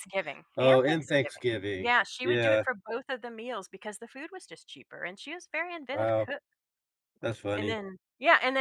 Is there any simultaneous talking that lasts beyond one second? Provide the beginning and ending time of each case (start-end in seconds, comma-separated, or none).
0.6-2.6